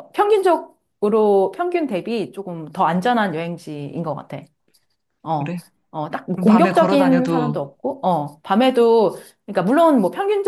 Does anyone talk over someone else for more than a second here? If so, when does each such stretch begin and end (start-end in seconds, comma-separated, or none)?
6.3-7.6